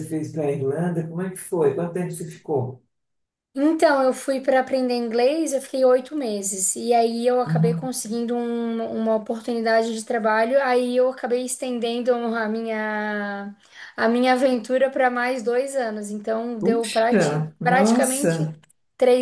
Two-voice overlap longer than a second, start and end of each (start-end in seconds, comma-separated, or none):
16.6-18.5